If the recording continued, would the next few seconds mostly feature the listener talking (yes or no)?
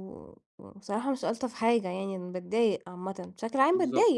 yes